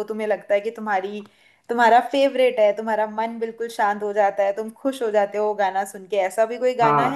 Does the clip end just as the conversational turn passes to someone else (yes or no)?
yes